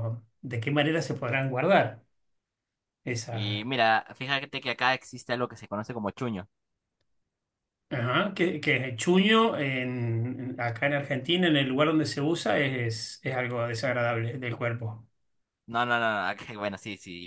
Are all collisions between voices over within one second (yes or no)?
yes